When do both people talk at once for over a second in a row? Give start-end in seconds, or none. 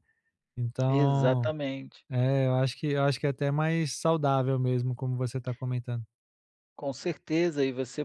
none